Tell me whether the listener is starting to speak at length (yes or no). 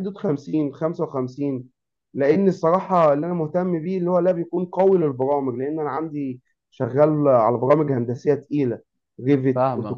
yes